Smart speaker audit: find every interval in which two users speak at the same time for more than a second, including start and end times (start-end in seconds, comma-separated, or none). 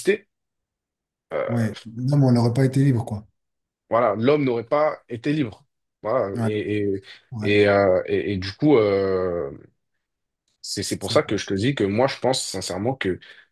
none